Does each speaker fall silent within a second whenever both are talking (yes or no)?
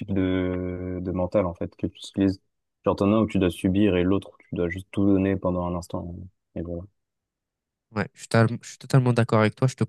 yes